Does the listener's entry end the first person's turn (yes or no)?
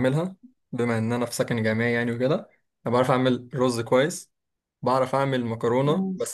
no